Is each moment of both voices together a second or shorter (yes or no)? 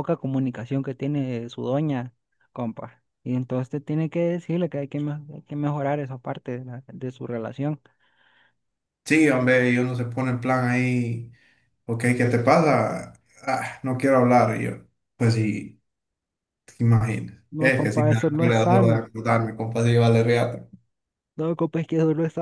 no